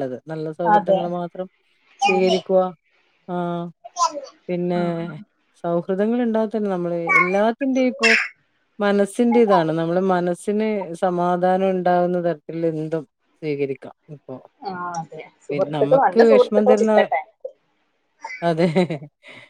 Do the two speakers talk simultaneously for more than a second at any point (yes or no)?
yes